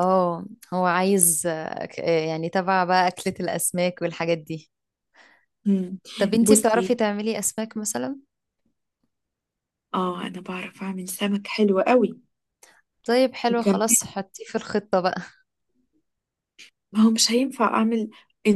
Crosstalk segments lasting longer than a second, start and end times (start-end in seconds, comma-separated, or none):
none